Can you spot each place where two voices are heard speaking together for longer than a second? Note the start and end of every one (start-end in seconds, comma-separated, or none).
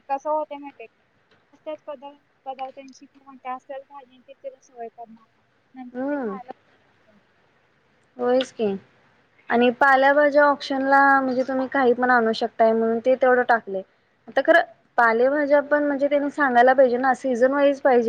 none